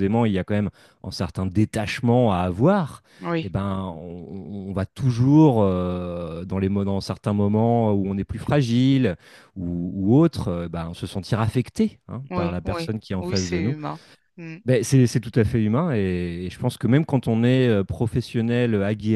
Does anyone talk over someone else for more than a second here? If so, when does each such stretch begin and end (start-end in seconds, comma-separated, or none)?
12.3-13.7